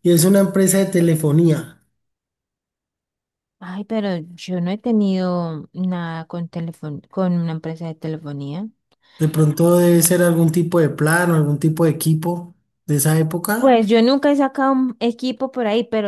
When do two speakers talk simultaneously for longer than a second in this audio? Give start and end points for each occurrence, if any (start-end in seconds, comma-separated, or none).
none